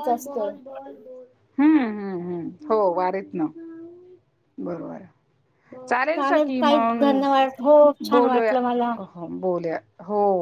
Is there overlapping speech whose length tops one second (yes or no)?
yes